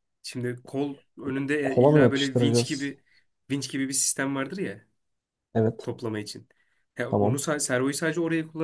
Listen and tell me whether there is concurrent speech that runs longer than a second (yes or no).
yes